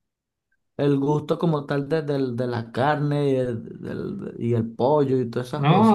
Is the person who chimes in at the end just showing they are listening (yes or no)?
no